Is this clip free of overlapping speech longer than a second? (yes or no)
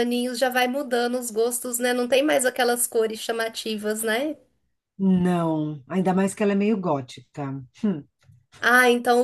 yes